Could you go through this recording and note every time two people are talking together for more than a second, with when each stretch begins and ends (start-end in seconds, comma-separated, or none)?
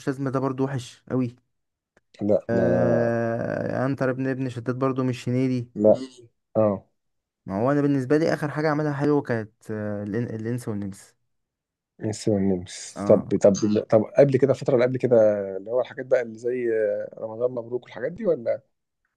none